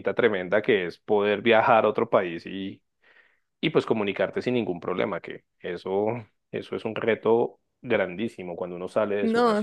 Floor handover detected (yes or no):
yes